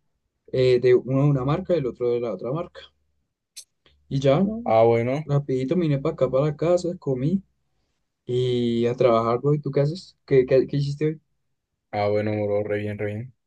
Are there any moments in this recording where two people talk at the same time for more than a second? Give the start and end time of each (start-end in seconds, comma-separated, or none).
none